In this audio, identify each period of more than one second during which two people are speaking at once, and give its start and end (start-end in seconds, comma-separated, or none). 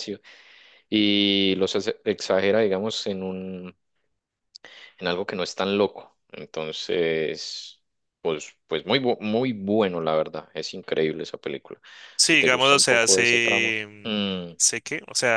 12.2-14.5